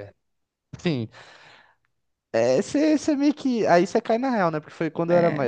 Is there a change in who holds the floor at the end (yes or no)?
no